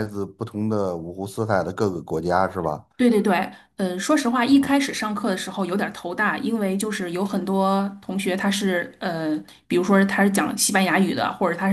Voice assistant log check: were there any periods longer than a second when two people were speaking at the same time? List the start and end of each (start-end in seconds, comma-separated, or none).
none